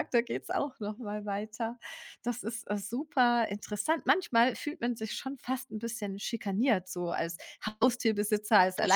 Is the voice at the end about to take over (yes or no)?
no